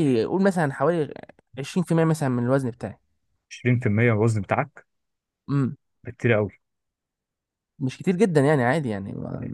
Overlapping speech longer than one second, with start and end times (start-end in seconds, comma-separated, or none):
none